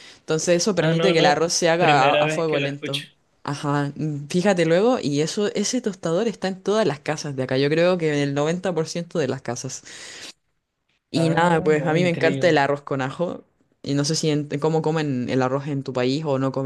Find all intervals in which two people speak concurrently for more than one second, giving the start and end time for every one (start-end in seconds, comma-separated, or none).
0.8-3.0, 11.1-12.6